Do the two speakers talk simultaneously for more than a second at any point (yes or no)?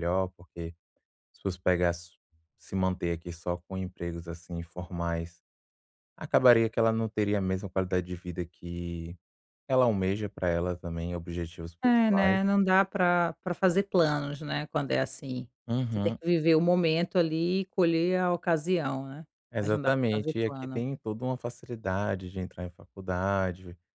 yes